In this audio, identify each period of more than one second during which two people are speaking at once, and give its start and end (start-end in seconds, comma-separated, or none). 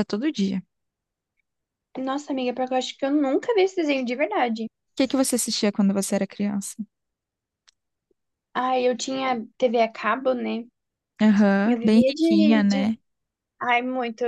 11.6-12.9